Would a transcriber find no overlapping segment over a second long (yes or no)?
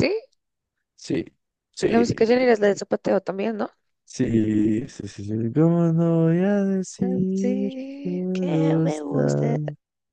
no